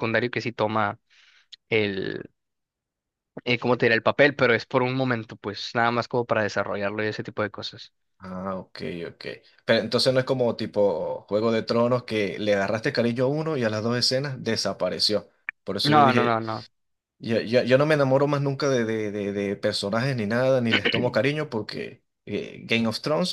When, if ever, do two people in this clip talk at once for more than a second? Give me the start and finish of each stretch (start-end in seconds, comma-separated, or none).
none